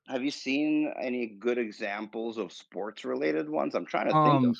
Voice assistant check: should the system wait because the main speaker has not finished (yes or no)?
no